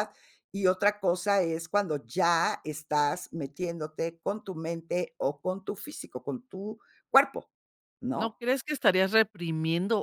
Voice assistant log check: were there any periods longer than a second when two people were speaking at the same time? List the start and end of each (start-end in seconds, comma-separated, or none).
none